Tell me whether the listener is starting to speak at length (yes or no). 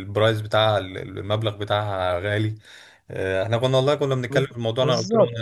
no